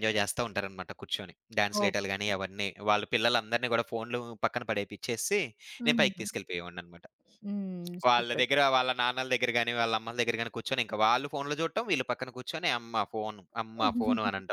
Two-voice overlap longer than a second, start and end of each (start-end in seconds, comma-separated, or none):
none